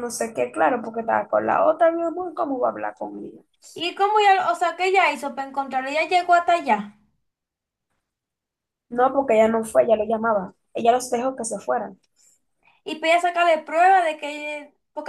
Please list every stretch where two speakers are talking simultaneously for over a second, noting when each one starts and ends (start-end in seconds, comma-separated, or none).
none